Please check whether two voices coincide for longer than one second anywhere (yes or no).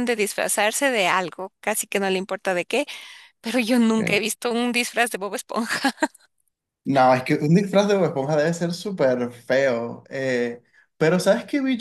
no